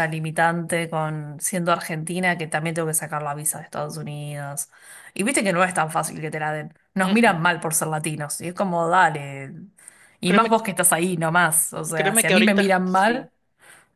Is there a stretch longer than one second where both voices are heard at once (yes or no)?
yes